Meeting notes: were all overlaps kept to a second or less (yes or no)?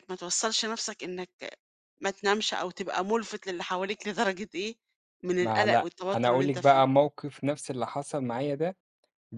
no